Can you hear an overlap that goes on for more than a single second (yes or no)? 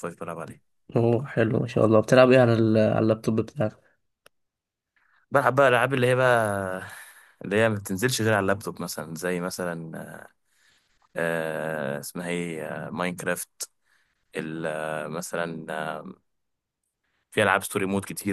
no